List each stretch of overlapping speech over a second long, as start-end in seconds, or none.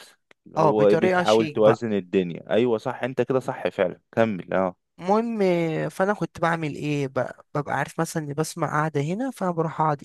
0.6-1.8